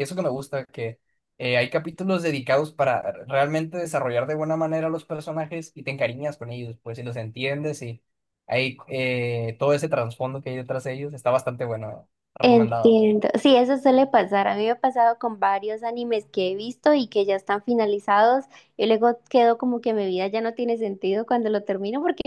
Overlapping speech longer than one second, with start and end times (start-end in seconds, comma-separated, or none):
none